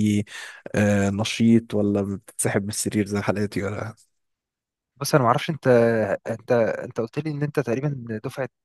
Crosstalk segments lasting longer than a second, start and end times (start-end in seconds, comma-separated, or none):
none